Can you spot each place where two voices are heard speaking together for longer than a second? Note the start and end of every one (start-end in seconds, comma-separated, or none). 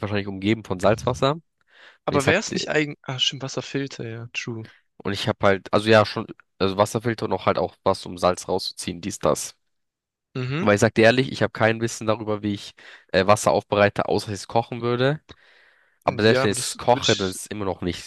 16.1-17.4